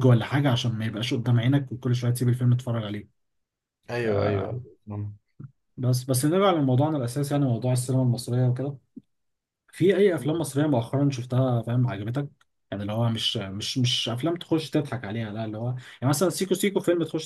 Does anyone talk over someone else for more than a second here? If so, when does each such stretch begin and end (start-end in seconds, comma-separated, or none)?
none